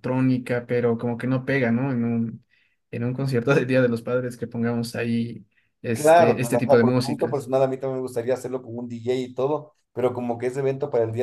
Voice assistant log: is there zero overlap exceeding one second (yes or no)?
no